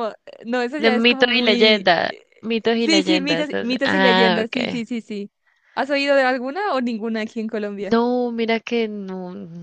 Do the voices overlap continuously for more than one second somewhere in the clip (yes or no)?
yes